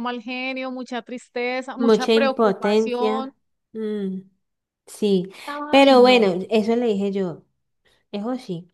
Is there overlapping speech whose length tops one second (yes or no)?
yes